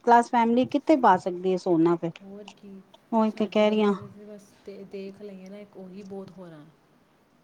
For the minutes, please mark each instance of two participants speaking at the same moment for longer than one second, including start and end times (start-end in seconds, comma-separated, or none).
none